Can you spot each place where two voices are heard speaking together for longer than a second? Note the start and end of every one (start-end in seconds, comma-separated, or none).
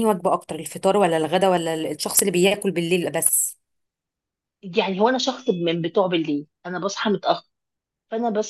none